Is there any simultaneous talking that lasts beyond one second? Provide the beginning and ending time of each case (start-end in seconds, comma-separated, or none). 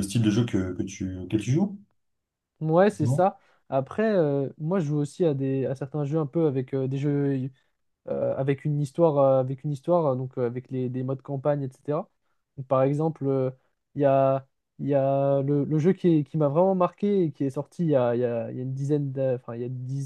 none